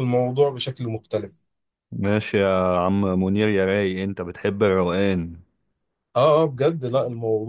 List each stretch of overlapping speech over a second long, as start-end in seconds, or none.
none